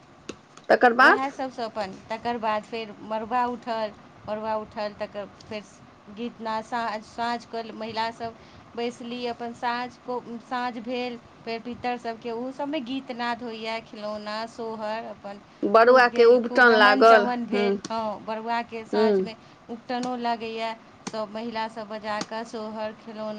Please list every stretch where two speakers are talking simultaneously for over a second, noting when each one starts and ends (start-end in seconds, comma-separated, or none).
15.9-17.6